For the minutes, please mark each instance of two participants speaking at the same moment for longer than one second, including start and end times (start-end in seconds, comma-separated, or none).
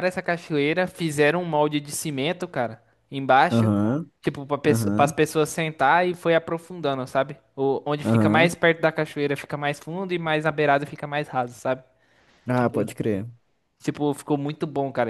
none